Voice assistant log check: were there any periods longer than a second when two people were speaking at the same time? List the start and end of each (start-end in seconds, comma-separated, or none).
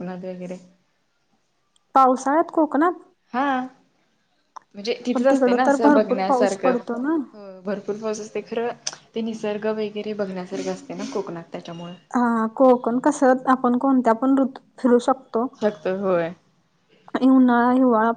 5.1-6.7